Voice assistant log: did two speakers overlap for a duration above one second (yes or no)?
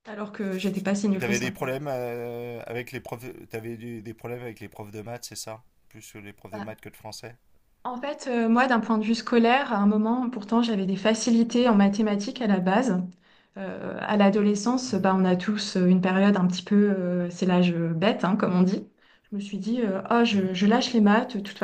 no